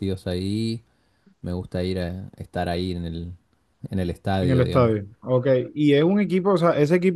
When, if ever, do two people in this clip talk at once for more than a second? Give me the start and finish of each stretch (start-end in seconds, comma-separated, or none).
none